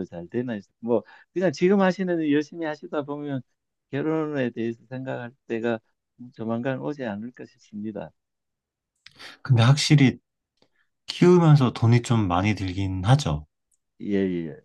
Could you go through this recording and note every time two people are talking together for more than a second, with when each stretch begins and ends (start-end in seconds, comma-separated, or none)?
none